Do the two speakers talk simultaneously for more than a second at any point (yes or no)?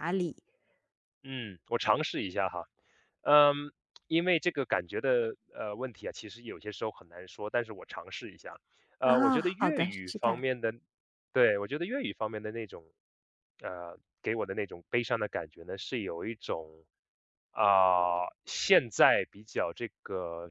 yes